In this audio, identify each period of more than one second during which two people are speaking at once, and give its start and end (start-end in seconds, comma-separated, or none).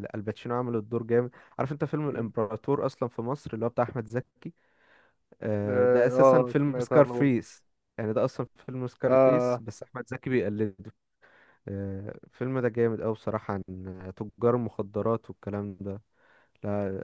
5.7-7.4